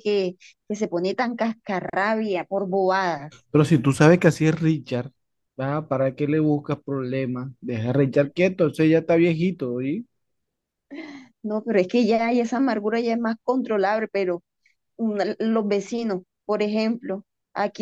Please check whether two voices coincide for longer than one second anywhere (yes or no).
no